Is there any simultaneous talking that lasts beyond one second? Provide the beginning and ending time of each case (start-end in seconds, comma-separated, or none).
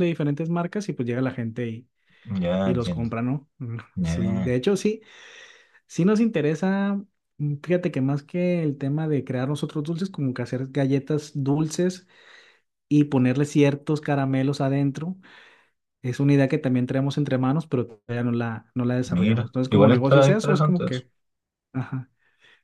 19.0-21.0